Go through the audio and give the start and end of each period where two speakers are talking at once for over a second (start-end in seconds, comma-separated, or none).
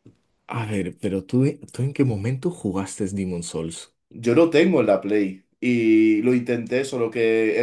none